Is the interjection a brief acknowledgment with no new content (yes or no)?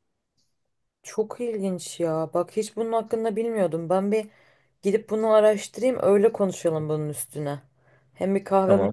yes